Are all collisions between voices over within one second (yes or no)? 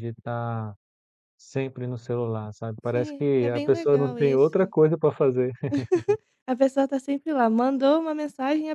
no